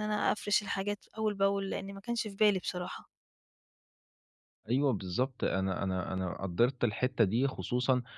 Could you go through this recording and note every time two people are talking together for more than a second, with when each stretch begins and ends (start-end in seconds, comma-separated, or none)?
none